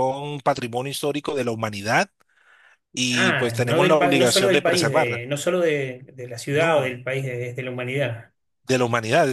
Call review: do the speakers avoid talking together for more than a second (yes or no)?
no